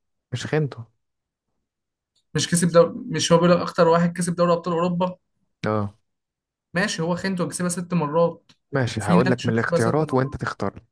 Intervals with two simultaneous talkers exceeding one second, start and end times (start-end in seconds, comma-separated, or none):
9.0-10.4